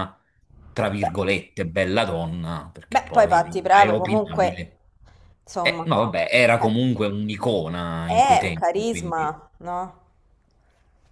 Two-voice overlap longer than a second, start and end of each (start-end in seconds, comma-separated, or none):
2.9-4.6, 8.0-9.4